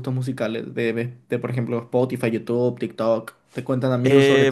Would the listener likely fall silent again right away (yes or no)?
yes